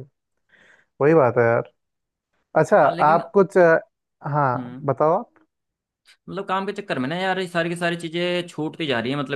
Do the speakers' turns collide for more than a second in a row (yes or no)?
no